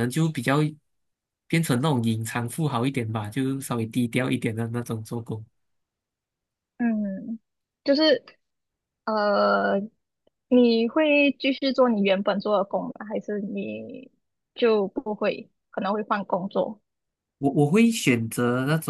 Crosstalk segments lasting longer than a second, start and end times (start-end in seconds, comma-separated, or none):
none